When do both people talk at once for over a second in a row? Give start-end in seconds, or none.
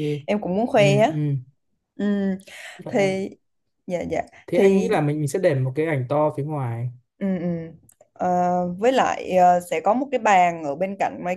none